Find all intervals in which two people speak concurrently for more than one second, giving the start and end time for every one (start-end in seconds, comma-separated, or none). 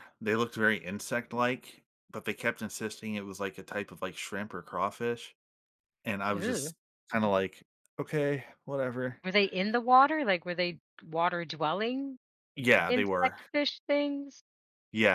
none